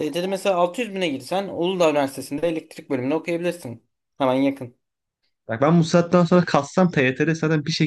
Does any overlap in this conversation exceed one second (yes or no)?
no